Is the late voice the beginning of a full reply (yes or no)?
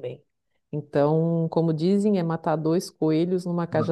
yes